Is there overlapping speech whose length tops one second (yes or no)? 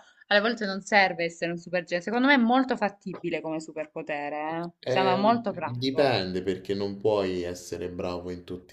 yes